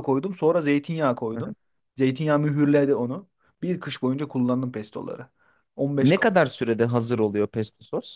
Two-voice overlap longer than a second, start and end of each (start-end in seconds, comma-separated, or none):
none